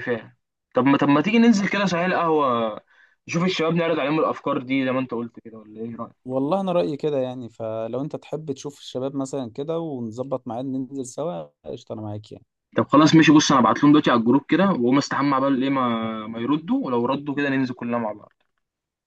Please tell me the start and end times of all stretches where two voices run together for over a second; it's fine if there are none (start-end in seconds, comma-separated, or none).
none